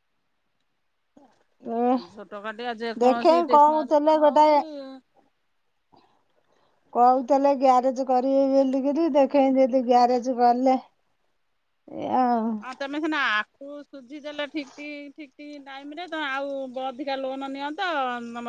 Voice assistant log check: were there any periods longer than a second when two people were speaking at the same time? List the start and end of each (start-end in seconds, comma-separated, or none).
3.0-4.5